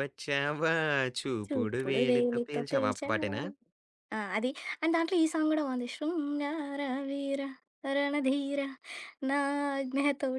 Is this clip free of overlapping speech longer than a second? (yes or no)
no